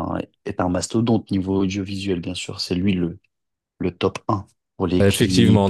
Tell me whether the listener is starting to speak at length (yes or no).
yes